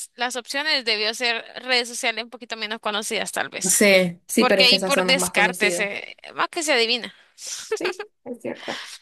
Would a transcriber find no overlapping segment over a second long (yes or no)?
no